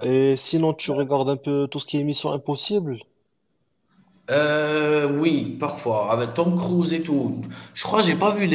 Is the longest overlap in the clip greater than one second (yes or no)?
no